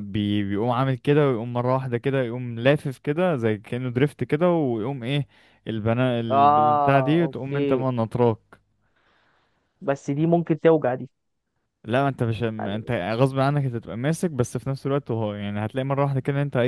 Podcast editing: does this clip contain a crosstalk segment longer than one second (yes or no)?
yes